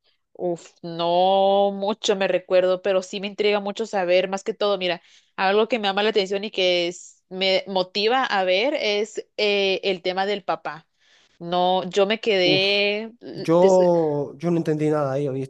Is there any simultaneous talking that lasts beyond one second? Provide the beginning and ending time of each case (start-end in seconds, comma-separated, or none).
none